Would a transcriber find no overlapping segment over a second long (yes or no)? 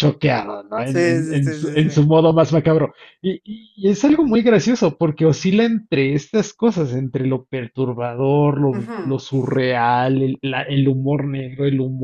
no